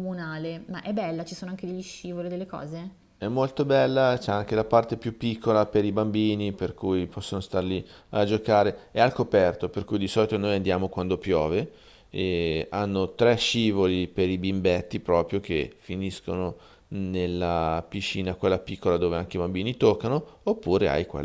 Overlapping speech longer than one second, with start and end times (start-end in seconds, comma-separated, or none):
none